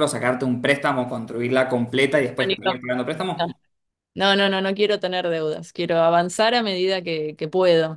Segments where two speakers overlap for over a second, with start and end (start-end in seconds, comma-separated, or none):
none